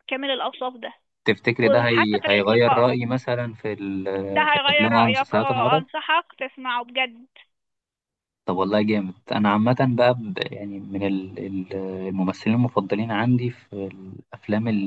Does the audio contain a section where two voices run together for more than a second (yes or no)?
yes